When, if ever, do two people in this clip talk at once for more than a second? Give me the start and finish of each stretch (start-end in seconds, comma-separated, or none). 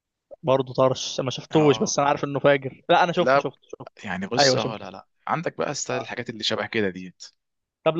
none